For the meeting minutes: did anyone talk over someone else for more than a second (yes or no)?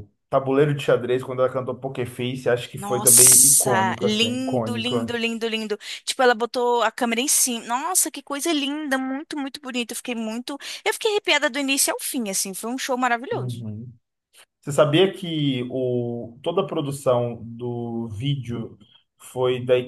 yes